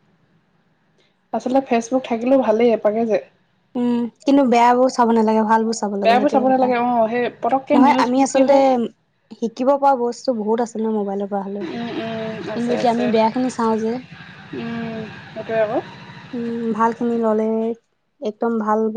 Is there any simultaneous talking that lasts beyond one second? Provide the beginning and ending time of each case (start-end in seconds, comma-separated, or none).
6.0-8.6